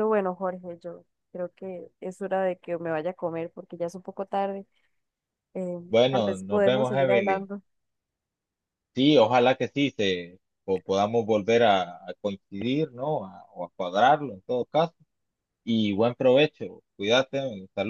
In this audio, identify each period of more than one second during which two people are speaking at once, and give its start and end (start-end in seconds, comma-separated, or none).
5.9-7.5